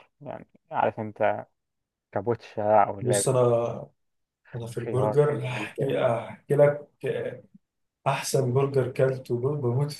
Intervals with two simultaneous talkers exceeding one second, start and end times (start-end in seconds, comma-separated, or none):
4.7-6.0